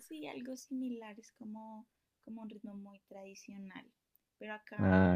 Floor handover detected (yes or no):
no